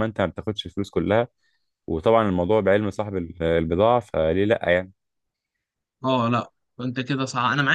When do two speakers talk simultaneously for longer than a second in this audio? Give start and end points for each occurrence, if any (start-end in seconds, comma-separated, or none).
none